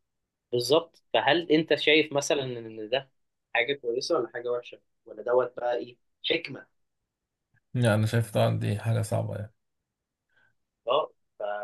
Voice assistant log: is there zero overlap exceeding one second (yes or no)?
yes